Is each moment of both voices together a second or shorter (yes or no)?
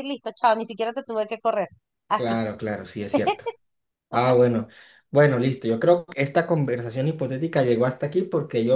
yes